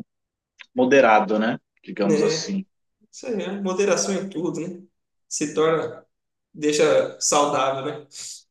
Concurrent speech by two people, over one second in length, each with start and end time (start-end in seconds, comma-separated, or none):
none